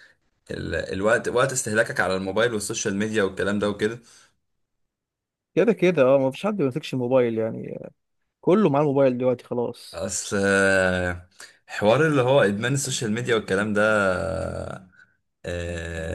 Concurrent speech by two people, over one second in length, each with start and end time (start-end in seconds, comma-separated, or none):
none